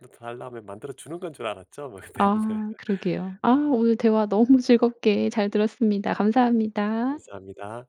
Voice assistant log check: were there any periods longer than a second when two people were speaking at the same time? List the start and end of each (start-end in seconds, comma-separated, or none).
none